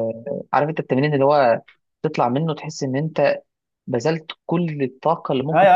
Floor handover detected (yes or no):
yes